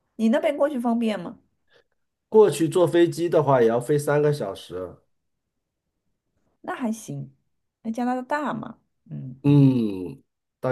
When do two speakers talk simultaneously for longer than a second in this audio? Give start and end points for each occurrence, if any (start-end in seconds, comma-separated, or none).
none